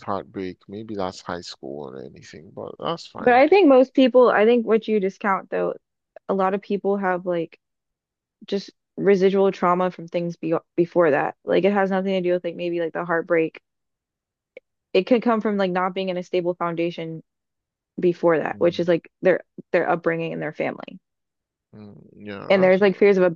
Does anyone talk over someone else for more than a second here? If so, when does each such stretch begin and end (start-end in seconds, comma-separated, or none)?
none